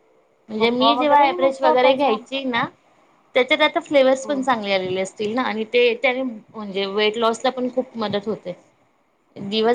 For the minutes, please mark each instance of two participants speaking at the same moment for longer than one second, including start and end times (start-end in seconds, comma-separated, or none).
0.6-2.2